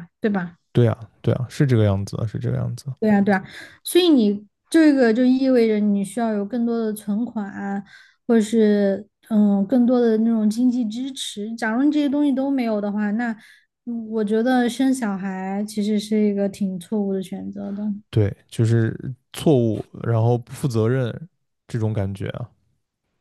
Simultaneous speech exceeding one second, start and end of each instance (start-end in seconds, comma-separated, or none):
none